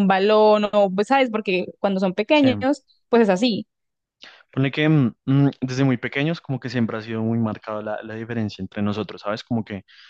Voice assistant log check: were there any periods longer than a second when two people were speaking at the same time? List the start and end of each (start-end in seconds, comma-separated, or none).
none